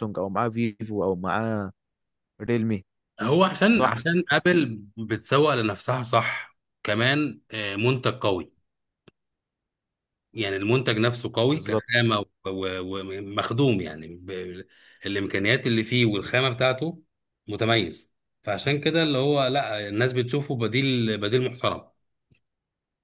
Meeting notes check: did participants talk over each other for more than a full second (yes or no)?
no